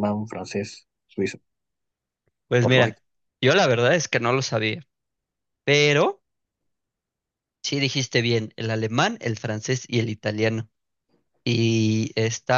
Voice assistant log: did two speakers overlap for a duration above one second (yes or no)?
no